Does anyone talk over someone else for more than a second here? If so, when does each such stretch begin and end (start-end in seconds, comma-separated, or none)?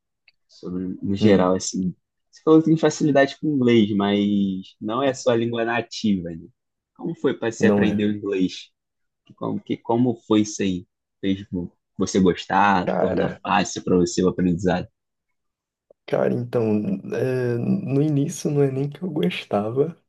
none